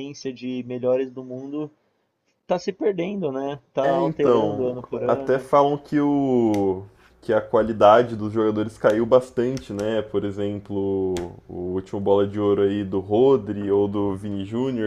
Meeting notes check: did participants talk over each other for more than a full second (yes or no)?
yes